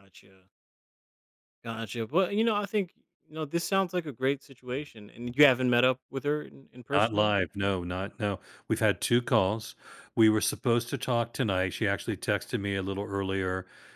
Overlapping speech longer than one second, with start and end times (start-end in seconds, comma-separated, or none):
none